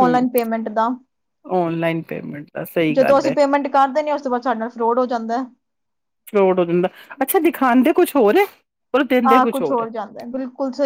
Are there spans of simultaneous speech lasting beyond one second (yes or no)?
no